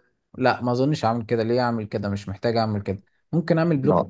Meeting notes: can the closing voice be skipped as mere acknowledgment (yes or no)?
yes